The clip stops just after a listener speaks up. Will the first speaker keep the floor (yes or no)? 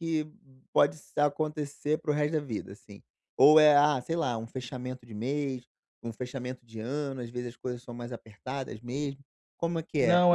no